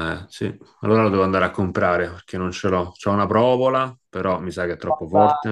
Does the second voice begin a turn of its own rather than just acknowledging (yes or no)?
yes